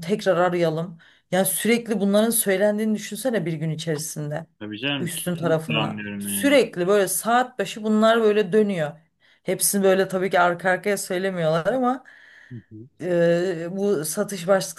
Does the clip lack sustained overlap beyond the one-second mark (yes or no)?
no